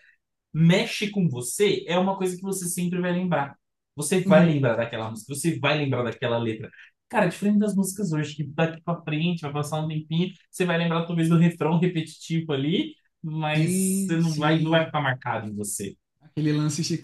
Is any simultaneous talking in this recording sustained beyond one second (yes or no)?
yes